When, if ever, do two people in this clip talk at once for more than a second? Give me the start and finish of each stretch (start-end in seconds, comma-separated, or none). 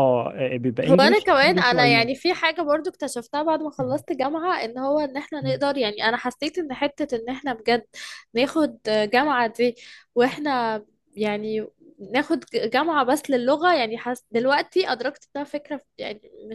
0.9-2.1